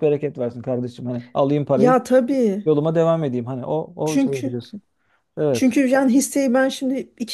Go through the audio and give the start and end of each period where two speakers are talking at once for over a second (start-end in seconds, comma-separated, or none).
none